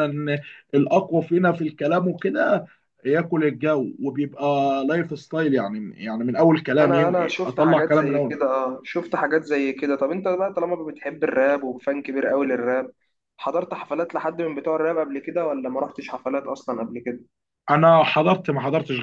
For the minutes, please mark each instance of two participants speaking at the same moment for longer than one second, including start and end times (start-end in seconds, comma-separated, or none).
6.8-8.3